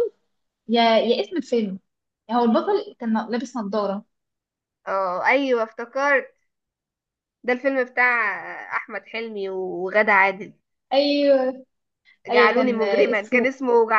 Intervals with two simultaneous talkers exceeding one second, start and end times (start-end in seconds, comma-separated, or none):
12.3-13.5